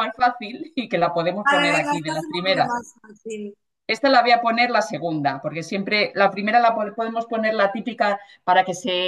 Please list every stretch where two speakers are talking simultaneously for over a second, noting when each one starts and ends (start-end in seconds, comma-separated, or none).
1.4-2.7